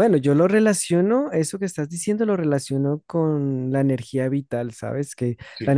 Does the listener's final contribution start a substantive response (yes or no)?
no